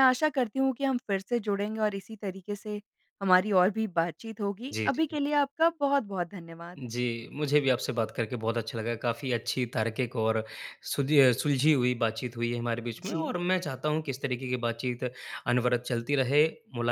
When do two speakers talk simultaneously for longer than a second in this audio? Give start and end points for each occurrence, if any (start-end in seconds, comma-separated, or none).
none